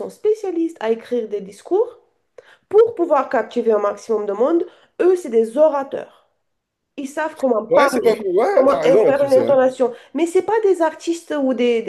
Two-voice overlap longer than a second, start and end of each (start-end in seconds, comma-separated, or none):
7.7-9.6